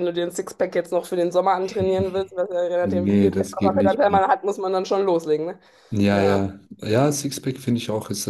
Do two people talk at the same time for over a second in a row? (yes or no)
yes